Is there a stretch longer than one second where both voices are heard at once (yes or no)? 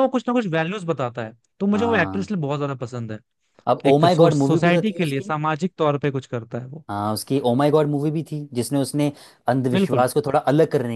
yes